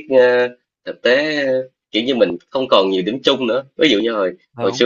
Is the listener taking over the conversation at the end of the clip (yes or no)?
no